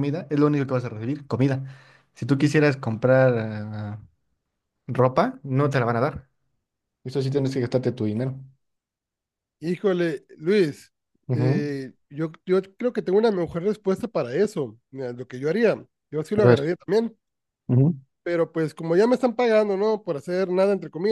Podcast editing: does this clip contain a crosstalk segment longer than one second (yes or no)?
no